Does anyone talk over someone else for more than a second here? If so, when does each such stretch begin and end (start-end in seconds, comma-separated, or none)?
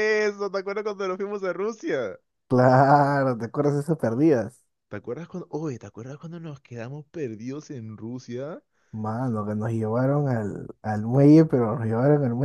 none